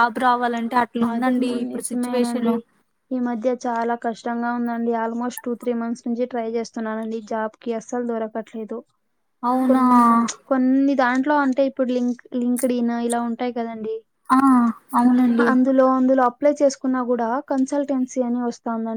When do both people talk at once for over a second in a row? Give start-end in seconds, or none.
1.1-2.5